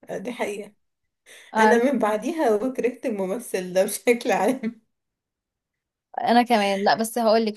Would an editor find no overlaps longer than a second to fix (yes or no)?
yes